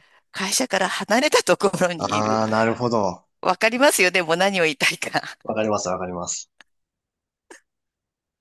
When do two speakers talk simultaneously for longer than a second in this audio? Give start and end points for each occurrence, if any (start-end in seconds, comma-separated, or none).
none